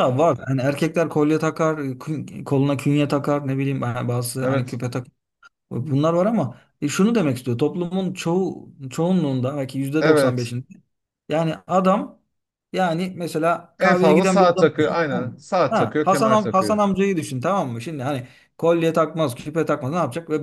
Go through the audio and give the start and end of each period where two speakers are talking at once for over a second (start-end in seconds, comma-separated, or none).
13.8-16.8